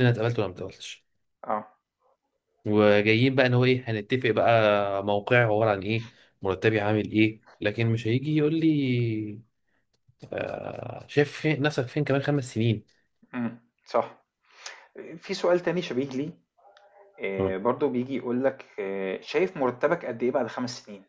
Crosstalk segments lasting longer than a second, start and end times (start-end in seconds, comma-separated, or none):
none